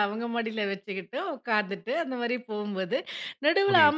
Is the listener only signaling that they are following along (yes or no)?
yes